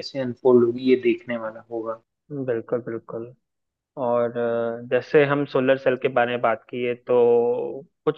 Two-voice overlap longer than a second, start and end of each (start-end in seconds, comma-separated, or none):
none